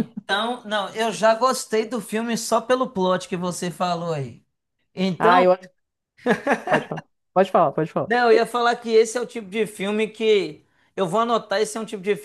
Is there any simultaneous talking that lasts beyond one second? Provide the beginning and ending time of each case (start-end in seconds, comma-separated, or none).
none